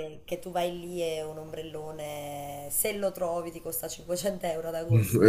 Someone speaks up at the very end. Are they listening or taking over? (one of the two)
taking over